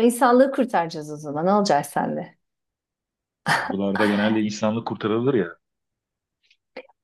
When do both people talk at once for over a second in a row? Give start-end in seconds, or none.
none